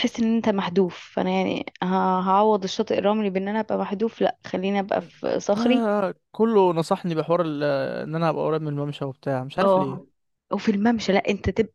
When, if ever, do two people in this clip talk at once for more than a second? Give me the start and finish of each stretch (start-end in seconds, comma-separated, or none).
none